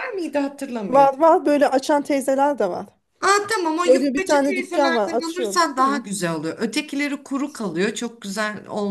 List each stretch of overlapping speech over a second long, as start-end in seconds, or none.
3.8-6.0